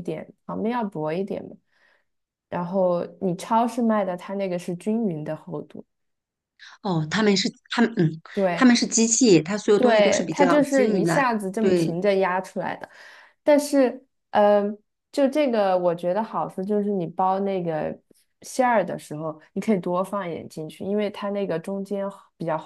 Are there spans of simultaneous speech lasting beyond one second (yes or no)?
yes